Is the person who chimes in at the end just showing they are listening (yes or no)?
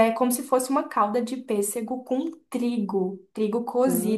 yes